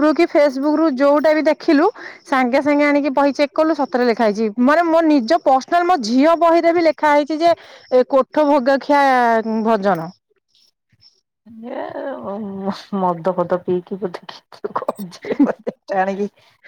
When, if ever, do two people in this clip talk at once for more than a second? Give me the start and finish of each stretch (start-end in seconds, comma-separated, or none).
none